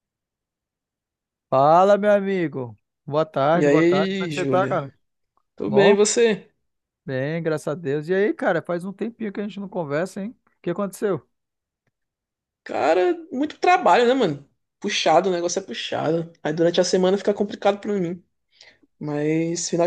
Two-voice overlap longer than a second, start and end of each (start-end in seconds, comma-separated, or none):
3.5-4.8